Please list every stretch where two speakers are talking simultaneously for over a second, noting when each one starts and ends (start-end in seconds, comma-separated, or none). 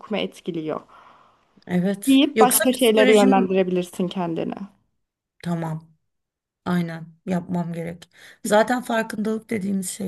2.1-3.6